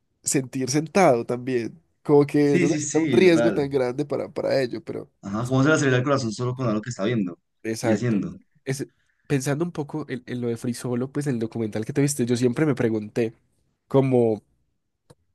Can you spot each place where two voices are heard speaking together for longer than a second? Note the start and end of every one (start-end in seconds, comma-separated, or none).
2.4-3.7